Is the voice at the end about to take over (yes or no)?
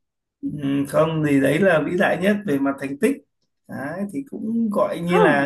no